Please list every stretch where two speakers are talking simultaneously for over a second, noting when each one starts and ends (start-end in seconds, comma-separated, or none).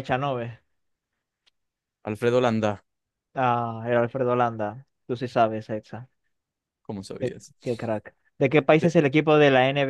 none